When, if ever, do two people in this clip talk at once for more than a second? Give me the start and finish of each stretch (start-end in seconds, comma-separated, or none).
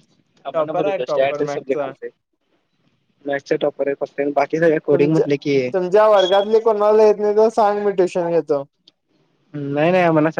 0.5-1.9